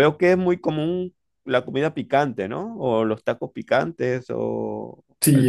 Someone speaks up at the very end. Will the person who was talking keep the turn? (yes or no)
no